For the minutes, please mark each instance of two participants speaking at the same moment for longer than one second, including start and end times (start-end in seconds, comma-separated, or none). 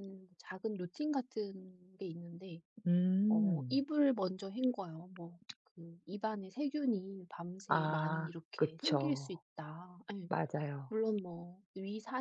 7.7-9.3